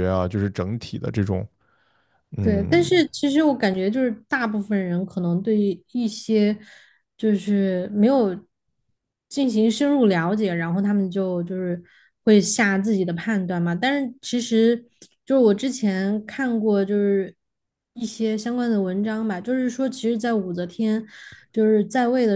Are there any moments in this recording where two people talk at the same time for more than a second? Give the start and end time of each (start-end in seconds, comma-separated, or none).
none